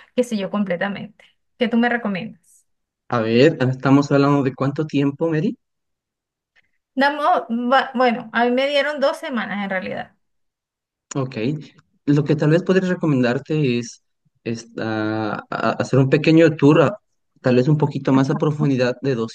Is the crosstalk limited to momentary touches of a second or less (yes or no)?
yes